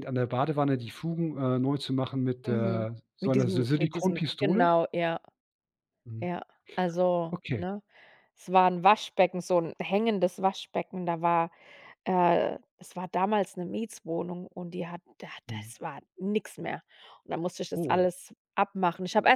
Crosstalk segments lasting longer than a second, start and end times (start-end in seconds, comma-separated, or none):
2.5-4.7